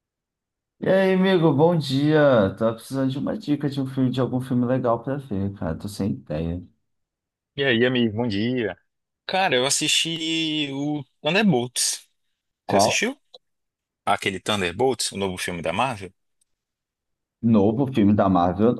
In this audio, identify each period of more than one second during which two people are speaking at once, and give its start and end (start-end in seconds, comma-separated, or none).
none